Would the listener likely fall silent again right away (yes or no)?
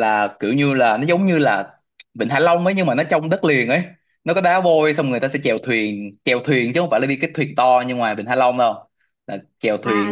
no